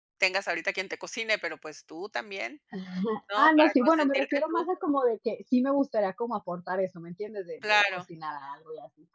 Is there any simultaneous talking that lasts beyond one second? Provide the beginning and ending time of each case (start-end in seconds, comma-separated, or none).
3.3-4.7